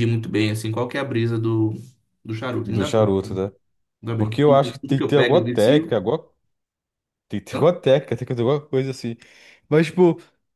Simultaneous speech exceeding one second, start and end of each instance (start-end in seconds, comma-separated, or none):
4.2-6.0